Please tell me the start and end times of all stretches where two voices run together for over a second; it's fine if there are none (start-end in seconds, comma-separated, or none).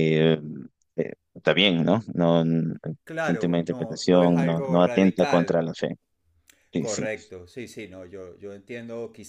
3.2-5.6